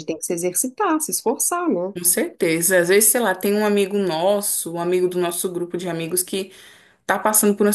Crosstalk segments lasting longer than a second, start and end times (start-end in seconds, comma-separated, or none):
none